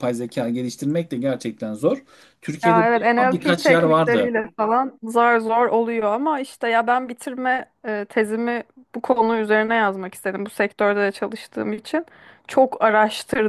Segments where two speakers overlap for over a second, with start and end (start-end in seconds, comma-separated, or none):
2.6-4.3